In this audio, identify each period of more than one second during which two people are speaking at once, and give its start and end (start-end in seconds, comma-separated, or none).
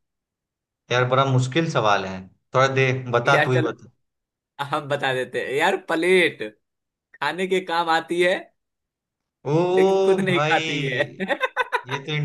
9.8-11.3